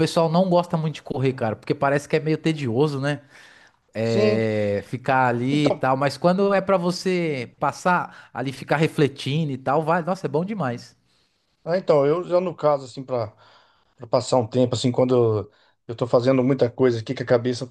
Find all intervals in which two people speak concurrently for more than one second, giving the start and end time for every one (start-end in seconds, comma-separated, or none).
none